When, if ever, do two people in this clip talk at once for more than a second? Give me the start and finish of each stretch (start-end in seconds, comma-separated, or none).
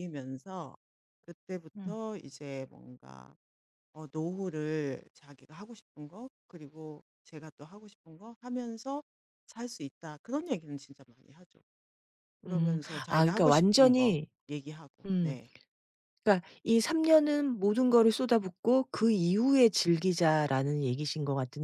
12.5-14.3